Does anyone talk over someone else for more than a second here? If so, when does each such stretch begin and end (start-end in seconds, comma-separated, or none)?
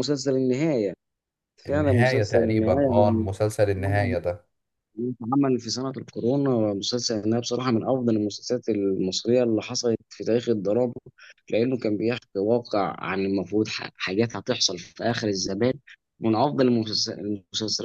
1.7-3.3